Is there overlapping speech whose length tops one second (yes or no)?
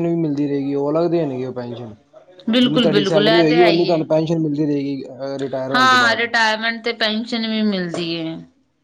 yes